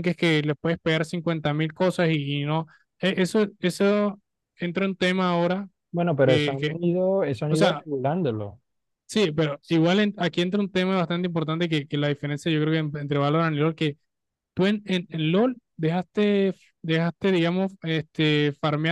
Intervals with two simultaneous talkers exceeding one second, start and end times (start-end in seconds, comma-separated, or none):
none